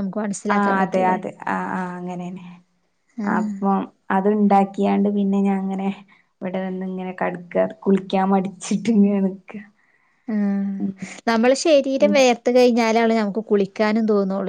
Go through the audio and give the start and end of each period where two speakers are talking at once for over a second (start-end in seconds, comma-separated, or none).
none